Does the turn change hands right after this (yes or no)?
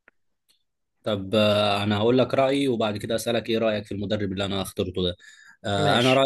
no